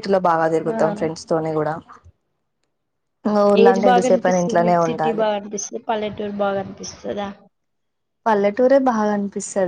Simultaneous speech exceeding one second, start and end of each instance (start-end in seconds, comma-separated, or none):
3.6-5.3